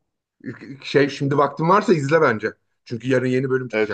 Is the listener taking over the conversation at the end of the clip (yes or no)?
yes